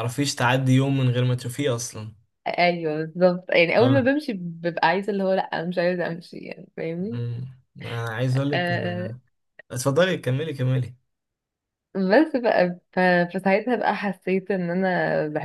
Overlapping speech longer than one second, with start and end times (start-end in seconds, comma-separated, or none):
none